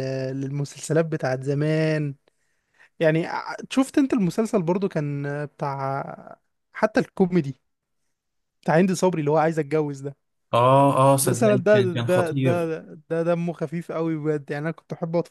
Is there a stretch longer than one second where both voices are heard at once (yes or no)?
yes